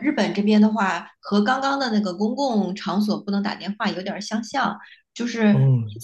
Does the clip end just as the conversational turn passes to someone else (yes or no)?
no